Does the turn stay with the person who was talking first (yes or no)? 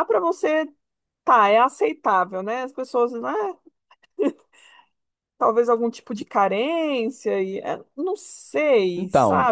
no